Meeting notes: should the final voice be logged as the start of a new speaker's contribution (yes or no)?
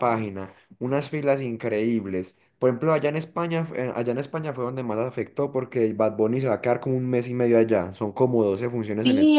yes